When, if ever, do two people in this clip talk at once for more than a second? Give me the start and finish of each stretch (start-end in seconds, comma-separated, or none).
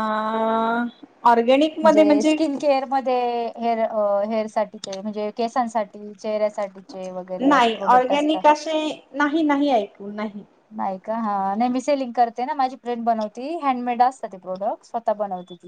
none